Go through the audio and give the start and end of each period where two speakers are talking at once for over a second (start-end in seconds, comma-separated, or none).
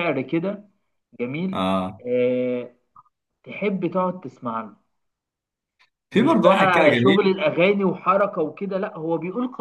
6.1-7.4